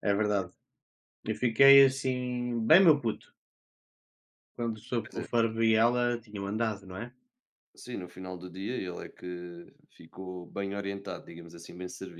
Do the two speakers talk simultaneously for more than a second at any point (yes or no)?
no